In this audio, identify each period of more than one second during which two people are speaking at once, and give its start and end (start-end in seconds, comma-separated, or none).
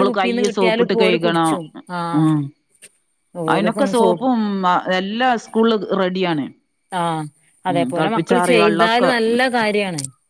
7.7-9.1